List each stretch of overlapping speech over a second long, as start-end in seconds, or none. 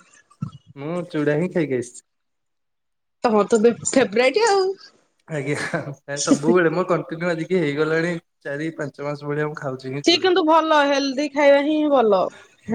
none